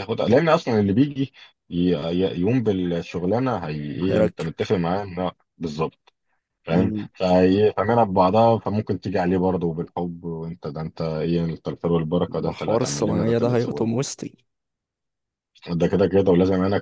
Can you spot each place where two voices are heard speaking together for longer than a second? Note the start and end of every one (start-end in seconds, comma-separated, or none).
12.3-13.9